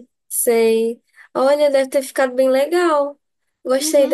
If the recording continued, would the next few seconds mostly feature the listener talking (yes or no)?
yes